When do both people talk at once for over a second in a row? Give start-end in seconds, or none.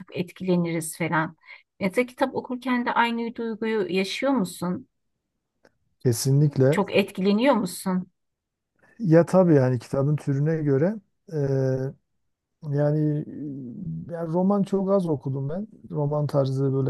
none